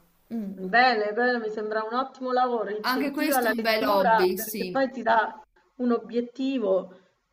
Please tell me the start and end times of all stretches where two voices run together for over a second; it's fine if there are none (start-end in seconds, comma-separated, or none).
2.9-4.8